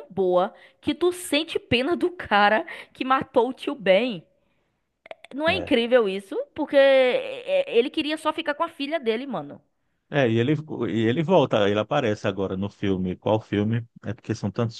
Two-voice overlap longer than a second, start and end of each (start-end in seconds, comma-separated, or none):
none